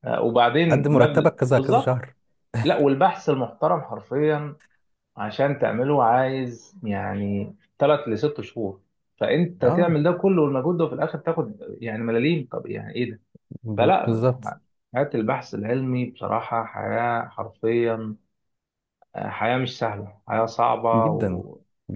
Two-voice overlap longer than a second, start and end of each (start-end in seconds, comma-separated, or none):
0.7-2.0